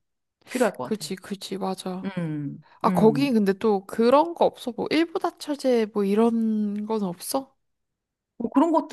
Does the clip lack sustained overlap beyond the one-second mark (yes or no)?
yes